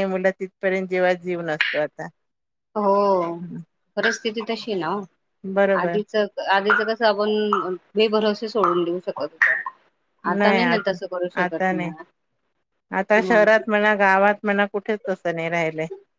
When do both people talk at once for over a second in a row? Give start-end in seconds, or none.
none